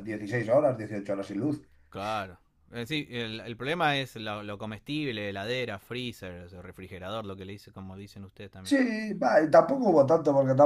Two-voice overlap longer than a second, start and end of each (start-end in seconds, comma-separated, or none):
none